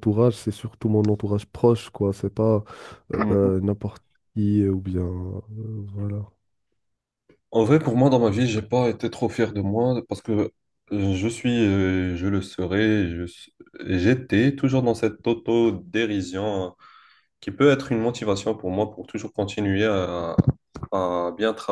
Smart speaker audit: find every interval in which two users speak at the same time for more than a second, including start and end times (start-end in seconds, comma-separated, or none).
none